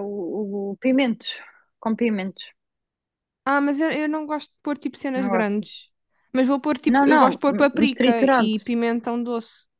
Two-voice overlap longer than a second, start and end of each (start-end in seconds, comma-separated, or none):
6.9-8.6